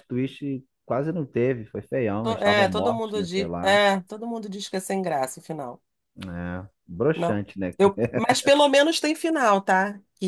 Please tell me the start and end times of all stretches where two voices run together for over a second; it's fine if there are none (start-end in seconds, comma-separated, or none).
2.2-3.8